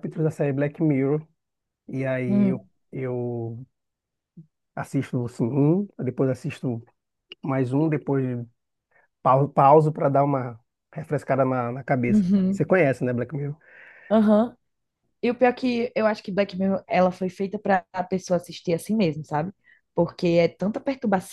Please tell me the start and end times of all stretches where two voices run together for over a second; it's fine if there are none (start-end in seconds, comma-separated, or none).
none